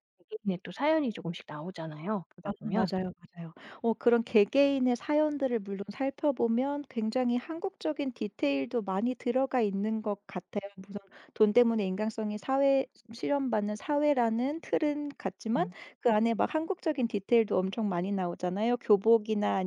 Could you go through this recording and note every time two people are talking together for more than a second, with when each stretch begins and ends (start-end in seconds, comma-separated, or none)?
none